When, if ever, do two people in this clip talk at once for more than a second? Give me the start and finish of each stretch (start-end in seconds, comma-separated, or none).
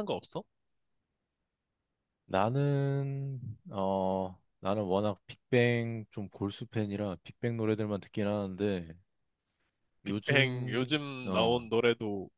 10.1-11.7